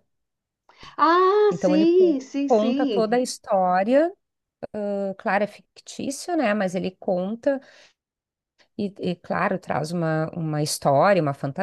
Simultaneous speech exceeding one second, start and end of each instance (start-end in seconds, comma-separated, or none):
1.5-3.3